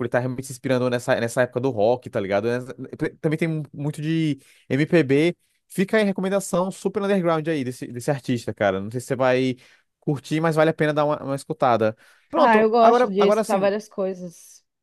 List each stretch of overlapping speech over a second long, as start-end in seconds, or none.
12.3-13.7